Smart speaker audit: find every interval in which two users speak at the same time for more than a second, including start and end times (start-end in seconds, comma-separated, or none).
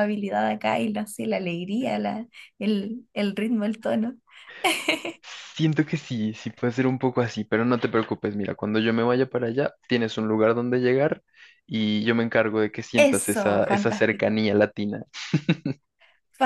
13.1-14.4